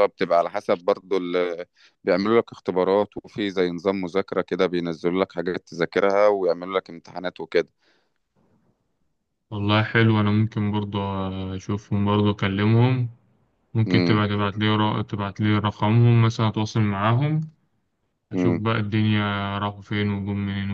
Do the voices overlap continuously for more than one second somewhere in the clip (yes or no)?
no